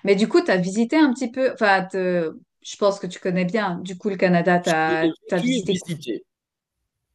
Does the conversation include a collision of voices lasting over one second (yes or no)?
yes